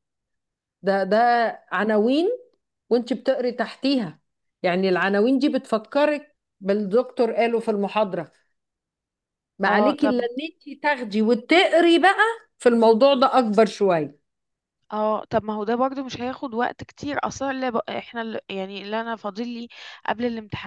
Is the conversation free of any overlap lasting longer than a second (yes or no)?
yes